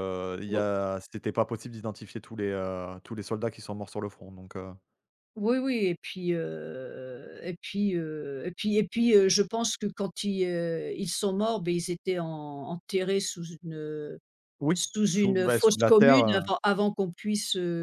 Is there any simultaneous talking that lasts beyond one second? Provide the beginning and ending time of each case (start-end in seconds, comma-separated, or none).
14.7-16.4